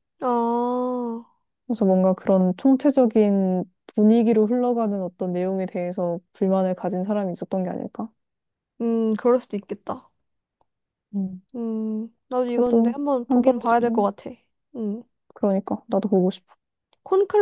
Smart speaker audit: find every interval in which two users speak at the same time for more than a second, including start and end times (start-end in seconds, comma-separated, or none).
12.4-14.1